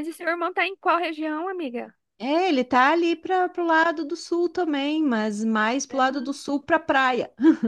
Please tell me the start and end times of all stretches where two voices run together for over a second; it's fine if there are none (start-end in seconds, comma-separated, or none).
none